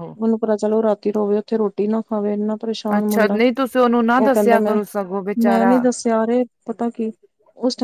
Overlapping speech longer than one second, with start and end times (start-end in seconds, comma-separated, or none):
none